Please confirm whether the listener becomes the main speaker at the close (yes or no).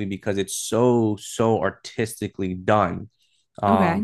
no